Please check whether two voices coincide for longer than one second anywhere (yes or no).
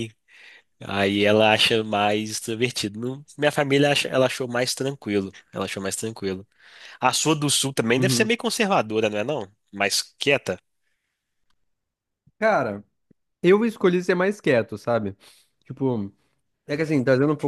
no